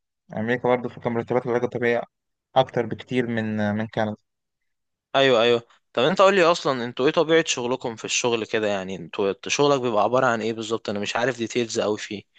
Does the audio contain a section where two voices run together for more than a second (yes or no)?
no